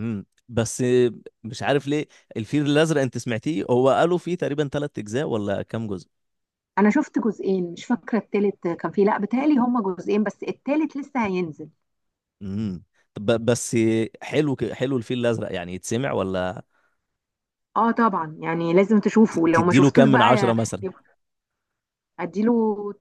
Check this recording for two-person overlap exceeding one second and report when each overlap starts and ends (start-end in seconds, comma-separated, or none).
19.3-20.9